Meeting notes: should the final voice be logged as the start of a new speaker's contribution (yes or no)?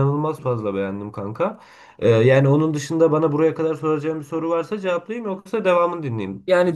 yes